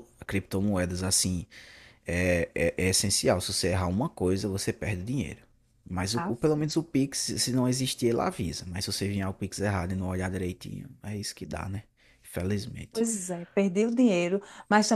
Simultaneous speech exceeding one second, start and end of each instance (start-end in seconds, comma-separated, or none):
none